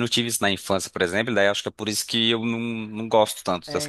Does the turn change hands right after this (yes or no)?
yes